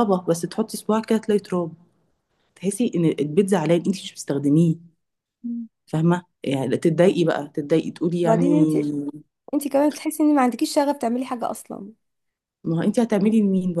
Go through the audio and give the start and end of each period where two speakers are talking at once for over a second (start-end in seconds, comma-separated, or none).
none